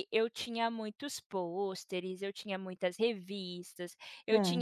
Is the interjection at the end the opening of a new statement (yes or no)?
no